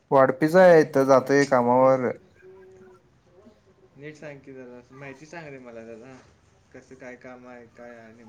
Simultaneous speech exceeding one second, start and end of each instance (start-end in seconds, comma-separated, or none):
0.6-2.1